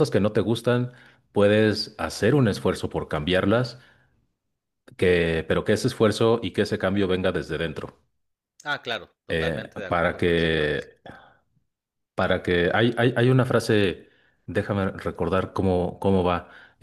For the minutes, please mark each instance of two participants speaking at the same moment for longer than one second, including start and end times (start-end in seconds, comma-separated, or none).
9.3-10.8